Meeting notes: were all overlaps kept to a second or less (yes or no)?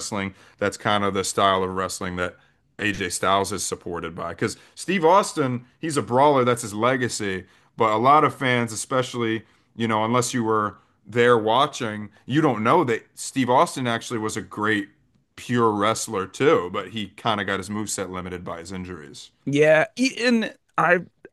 yes